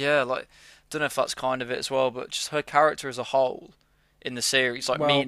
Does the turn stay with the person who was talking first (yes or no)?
yes